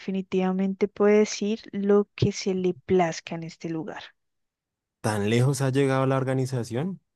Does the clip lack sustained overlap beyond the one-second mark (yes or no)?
yes